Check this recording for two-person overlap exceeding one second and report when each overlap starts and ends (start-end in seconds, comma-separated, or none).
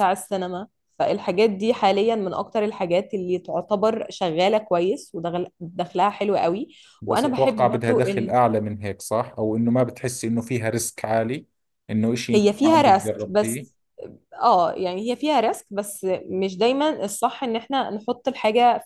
7.1-8.3, 12.3-13.7